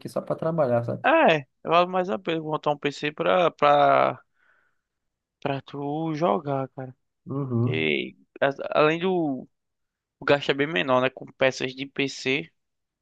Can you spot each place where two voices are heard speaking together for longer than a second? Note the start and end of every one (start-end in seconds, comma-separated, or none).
none